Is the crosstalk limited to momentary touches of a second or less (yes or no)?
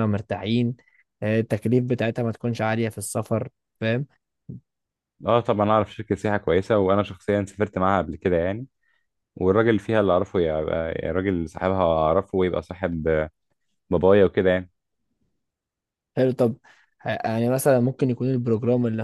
yes